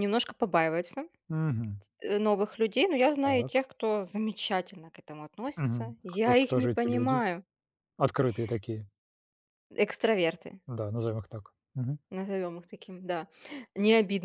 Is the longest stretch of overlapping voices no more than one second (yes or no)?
no